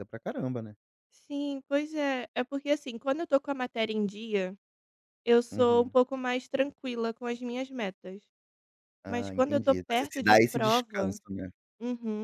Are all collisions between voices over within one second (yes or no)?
no